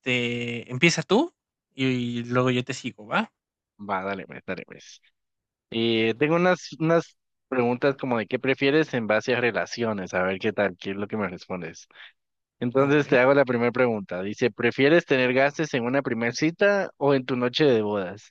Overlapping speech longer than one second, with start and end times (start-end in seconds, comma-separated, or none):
none